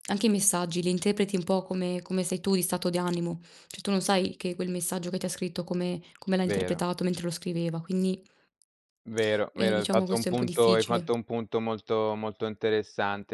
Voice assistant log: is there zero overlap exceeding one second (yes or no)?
no